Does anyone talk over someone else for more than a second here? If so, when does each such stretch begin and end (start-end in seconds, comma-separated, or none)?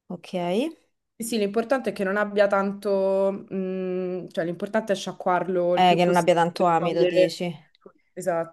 5.7-7.4